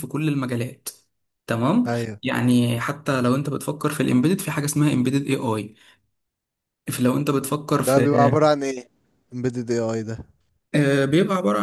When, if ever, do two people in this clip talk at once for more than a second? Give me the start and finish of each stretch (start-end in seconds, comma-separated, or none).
none